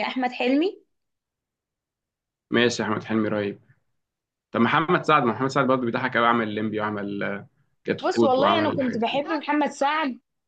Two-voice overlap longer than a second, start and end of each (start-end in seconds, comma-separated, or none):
8.0-9.2